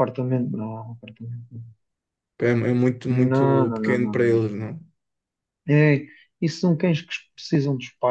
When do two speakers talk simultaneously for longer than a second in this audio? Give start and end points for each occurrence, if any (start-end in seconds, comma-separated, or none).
3.0-4.6